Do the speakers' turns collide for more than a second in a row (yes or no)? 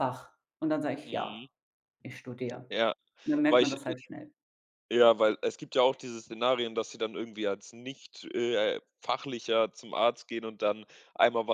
no